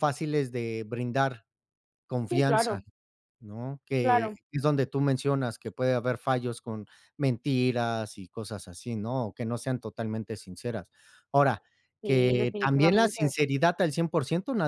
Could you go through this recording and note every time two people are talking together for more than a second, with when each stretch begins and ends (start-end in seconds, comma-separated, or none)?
12.0-13.3